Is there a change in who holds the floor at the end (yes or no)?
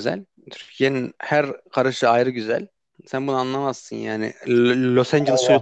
yes